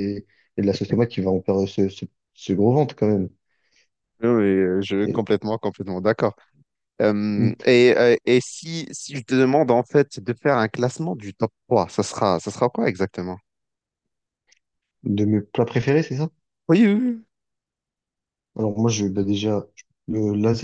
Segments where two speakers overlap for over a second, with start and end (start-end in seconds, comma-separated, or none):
none